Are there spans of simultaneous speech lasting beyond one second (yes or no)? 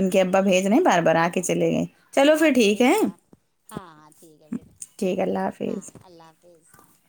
no